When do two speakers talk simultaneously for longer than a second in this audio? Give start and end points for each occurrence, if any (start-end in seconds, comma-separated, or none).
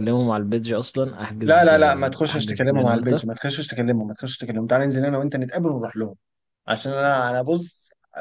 1.4-3.2